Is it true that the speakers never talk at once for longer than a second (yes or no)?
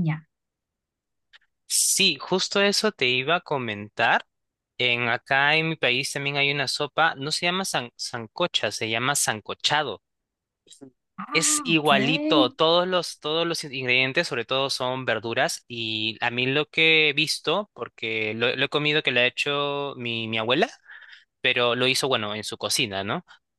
no